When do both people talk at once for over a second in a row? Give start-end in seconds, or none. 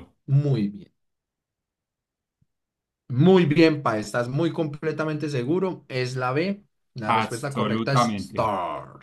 7.1-8.5